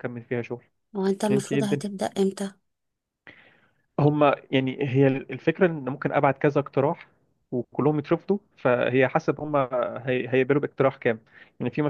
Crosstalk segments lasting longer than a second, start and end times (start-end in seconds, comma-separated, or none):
none